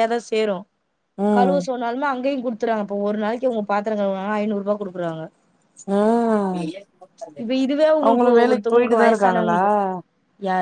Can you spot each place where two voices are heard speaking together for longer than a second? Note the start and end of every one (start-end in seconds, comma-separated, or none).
8.1-9.6